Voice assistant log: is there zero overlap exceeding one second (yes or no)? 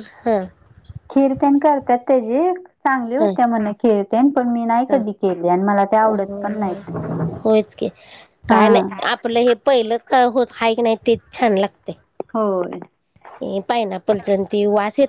yes